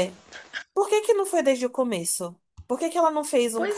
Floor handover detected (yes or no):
no